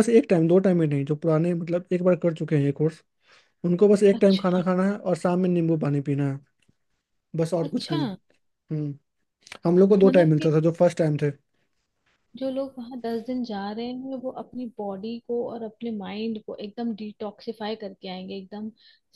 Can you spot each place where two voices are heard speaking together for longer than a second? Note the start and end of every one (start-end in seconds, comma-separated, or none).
none